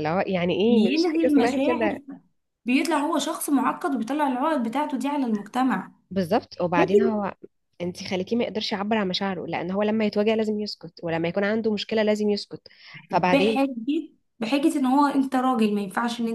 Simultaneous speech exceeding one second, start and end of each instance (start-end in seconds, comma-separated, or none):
0.7-2.0